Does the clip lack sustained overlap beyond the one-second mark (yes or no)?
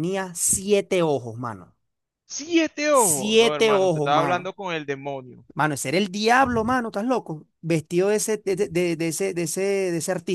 no